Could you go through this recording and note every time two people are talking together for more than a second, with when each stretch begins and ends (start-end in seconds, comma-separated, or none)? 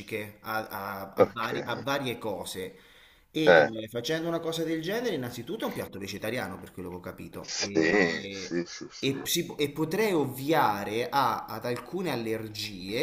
7.4-9.1